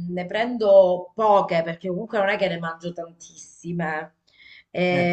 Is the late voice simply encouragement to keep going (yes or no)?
yes